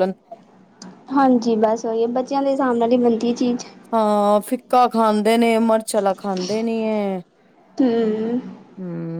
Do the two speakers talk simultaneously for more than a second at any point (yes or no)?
no